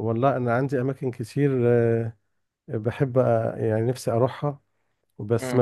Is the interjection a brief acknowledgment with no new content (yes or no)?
no